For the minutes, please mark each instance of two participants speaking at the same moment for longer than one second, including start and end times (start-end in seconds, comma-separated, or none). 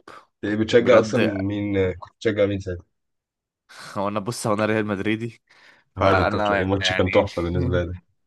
6.0-7.2